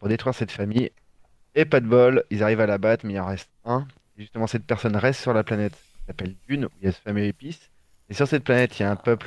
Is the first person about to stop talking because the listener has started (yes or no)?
no